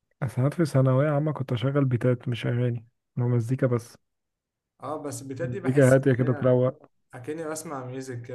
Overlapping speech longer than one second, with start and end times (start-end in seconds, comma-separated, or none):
5.4-6.6